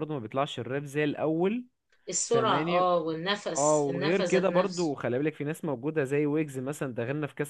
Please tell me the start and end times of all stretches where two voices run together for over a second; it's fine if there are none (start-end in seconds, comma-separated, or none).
3.5-5.0